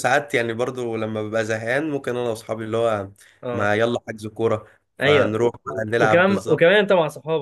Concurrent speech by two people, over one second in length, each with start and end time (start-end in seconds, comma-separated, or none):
5.0-6.7